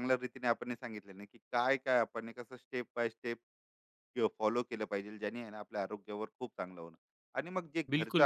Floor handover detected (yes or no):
no